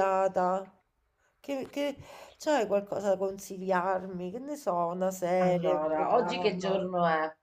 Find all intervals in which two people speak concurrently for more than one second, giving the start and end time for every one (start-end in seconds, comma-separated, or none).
5.4-6.8